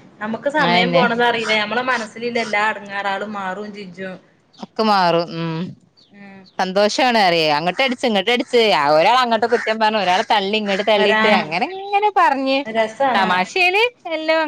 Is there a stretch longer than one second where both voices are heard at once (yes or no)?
no